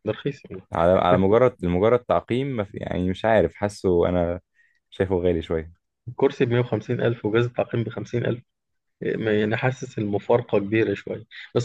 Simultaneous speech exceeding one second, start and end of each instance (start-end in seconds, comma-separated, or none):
none